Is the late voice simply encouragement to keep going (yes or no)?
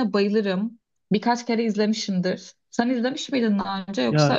no